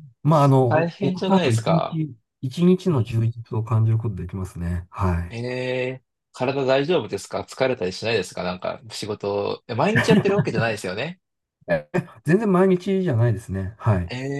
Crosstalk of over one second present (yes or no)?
yes